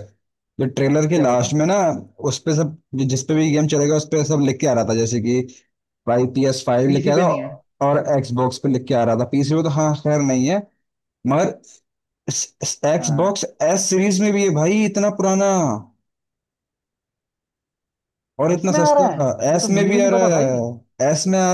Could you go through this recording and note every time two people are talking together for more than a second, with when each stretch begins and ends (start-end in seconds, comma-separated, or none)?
18.5-20.5